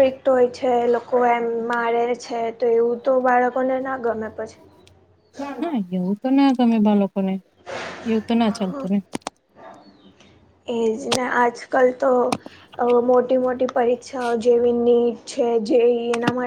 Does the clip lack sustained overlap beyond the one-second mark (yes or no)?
yes